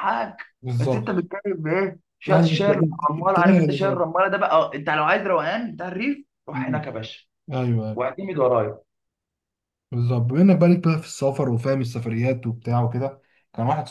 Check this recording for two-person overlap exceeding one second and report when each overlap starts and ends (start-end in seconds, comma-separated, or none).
2.3-4.0